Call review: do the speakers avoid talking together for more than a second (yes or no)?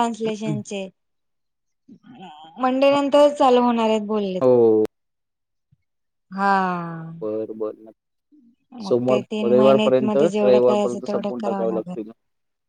no